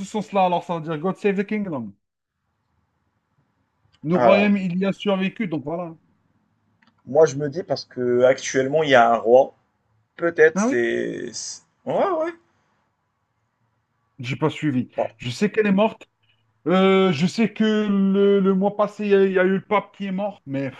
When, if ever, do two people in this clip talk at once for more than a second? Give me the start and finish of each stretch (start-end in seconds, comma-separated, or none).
none